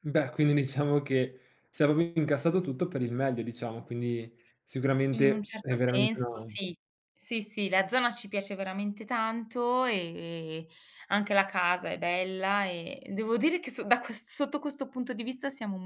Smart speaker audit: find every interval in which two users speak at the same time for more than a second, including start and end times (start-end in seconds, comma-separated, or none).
5.1-6.5